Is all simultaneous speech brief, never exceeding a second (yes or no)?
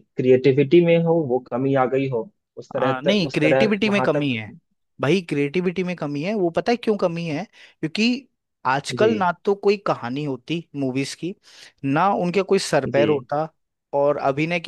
no